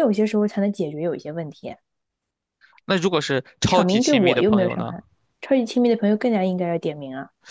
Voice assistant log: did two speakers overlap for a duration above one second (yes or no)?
yes